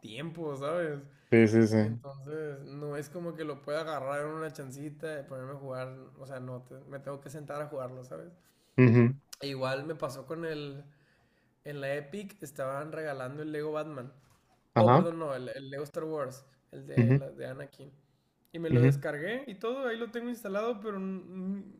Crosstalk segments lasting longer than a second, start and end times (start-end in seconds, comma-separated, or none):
none